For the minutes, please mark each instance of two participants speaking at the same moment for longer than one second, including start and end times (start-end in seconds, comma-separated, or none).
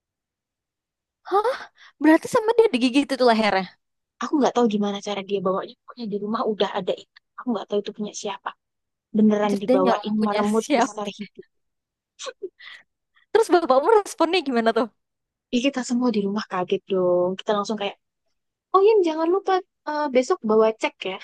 9.4-11.1